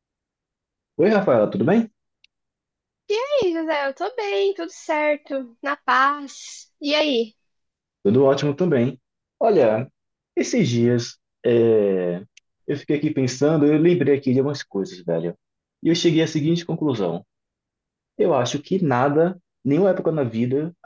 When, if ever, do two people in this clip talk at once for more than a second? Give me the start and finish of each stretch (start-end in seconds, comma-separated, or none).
none